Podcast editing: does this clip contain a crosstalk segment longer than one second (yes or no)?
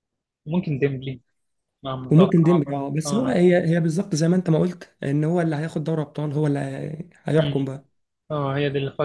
yes